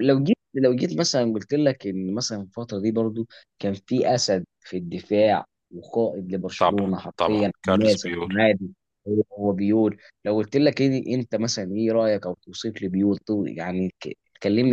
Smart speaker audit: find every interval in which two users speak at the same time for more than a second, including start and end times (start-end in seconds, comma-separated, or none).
6.6-8.3